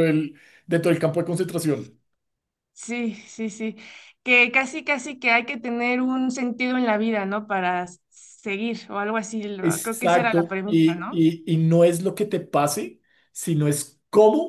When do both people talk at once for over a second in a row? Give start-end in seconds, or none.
9.6-11.2